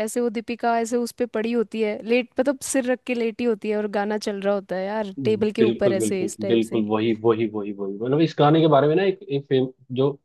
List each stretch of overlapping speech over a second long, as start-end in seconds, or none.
5.2-6.8